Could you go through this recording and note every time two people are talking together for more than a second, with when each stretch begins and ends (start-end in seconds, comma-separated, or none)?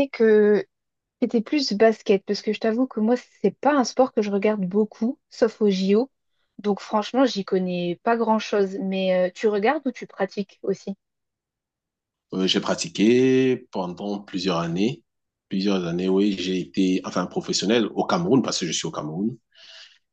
none